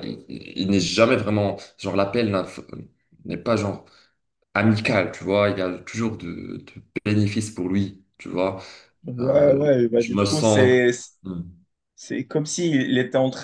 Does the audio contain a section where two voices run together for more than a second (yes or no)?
yes